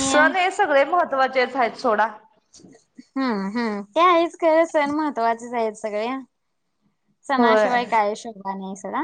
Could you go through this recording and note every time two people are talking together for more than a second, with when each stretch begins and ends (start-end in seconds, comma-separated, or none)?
none